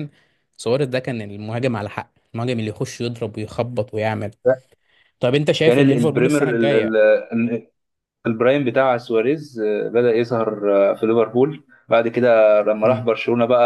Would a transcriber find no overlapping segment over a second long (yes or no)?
no